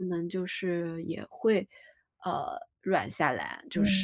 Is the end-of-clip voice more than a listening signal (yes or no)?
no